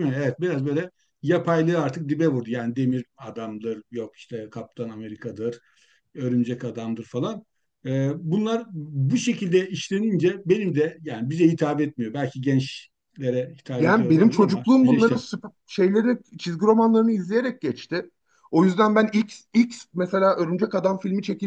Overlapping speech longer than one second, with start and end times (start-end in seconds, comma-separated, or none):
13.8-15.2